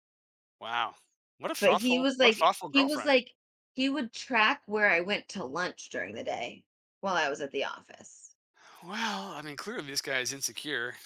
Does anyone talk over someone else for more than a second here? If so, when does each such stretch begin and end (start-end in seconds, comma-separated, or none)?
1.6-3.1